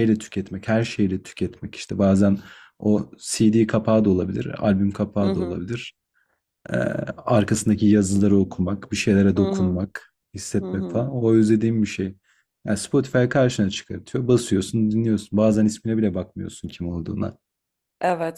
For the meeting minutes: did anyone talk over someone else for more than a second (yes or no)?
no